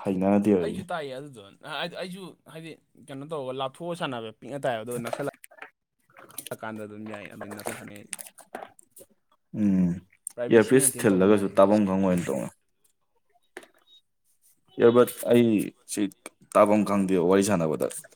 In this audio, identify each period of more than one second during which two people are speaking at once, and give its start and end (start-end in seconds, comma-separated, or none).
10.5-11.8